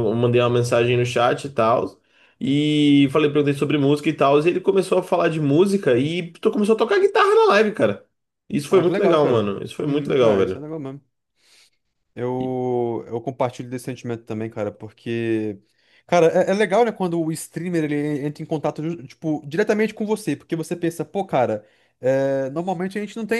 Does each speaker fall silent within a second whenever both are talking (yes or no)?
no